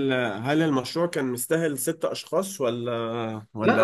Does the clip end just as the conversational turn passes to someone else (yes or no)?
yes